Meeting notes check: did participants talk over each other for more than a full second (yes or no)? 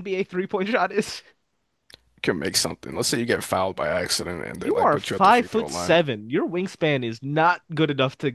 yes